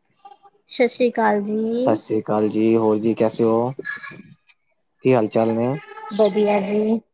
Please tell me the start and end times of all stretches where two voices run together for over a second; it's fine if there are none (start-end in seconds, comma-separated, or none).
none